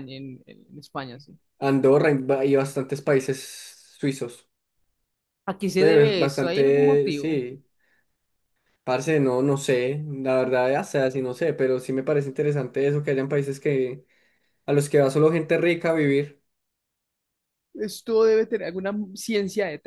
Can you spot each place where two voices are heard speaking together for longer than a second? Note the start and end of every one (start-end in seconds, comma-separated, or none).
5.8-7.4